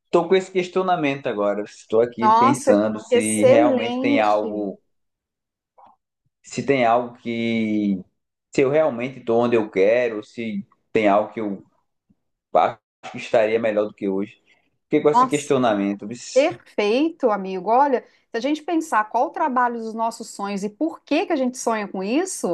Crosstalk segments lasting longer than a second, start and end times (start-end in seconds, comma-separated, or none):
2.2-4.3